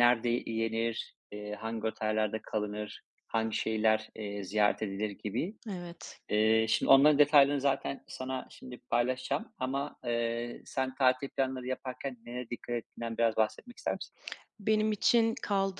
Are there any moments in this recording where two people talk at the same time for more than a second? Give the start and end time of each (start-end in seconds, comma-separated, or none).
none